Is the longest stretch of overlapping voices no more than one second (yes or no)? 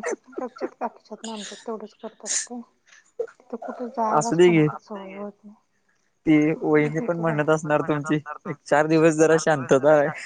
no